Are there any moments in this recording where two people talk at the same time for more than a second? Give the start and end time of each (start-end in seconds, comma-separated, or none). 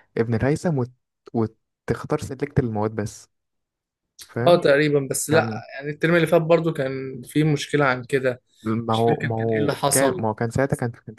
8.9-10.2